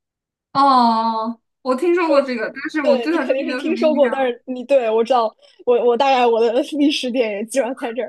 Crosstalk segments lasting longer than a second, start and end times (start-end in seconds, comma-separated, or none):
2.8-4.3